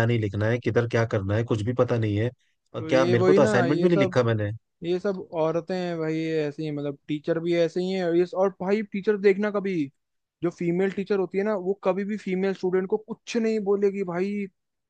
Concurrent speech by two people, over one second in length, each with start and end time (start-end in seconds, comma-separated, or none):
2.8-4.2